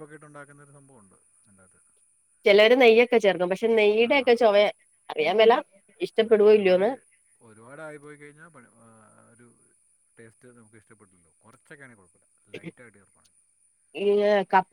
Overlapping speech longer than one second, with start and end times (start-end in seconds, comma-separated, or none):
none